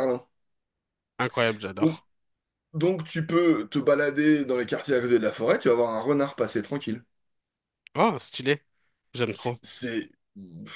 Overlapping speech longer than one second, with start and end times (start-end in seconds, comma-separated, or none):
none